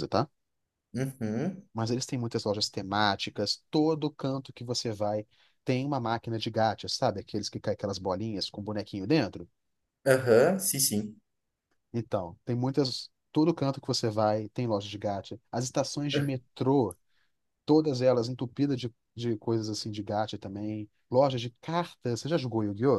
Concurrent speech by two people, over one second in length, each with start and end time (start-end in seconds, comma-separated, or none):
none